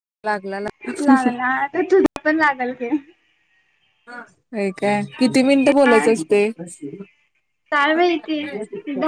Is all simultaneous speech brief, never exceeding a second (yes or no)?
yes